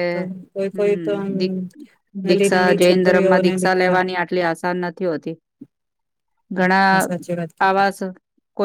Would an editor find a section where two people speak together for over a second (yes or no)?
yes